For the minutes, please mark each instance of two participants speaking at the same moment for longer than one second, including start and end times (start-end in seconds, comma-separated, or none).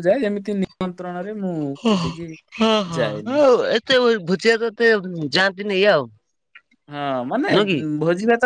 none